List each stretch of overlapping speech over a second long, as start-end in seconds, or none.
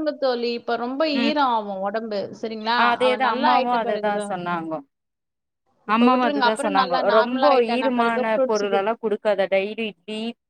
6.1-8.8